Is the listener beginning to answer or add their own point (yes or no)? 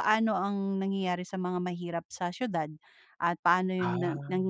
no